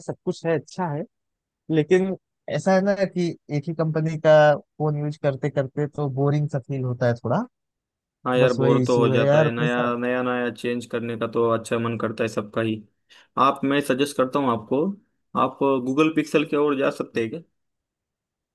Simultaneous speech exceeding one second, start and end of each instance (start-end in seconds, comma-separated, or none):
8.4-9.9